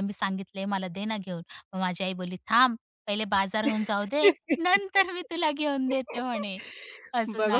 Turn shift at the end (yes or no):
yes